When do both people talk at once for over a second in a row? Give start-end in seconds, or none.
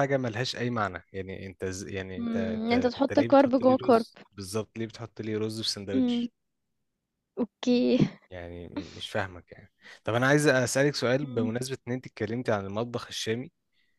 2.2-4.1